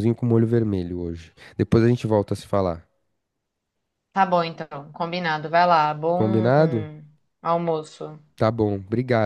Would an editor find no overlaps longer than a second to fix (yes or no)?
yes